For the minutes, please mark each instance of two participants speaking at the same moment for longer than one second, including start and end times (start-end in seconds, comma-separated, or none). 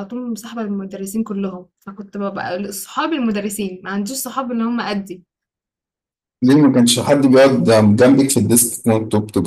none